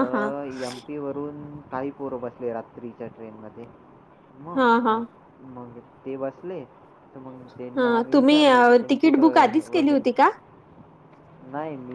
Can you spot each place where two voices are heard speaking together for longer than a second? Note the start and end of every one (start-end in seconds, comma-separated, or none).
7.8-10.0